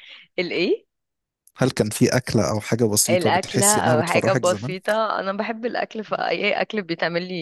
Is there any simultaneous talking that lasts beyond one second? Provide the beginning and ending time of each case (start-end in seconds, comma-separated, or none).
3.1-4.7